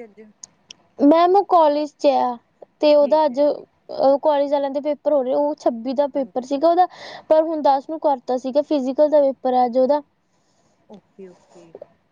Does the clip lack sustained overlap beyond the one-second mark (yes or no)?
yes